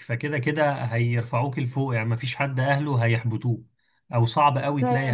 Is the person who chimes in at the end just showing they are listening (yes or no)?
yes